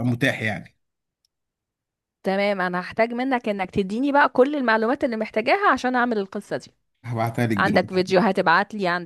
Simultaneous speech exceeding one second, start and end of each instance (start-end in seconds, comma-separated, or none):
none